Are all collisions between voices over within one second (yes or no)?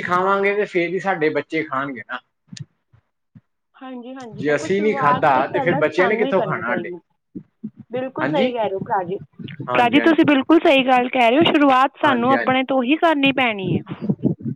no